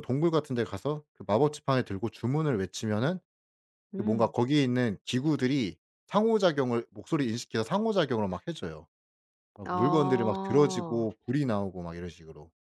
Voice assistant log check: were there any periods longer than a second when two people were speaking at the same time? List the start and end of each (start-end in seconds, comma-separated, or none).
9.6-11.1